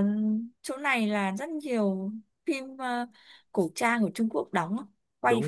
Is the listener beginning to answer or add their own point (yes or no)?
yes